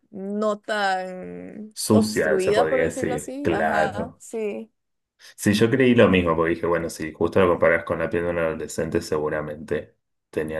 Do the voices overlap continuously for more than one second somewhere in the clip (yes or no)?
yes